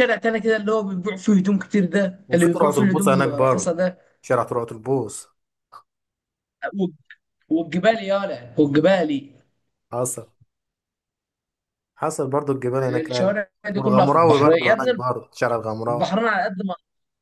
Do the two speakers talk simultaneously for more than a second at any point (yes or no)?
yes